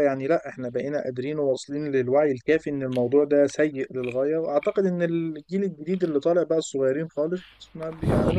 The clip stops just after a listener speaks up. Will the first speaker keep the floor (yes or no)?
no